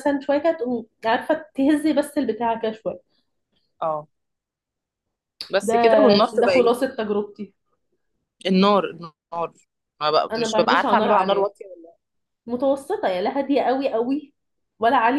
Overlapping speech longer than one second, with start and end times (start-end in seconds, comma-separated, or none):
10.3-11.5